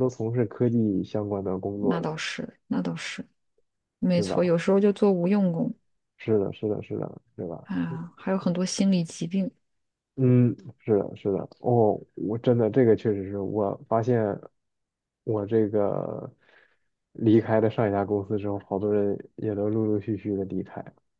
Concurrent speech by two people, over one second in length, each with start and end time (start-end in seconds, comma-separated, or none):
none